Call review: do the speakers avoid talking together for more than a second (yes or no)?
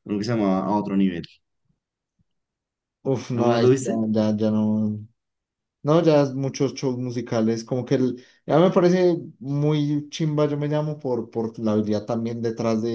yes